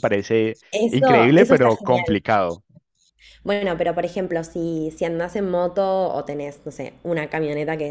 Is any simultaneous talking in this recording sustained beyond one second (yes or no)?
yes